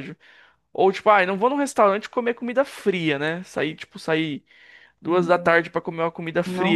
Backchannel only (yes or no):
yes